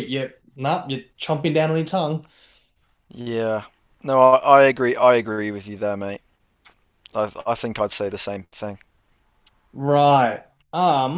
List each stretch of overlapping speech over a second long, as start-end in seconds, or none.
none